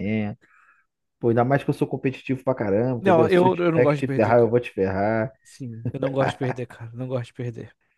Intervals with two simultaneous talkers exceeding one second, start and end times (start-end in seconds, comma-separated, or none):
3.0-4.6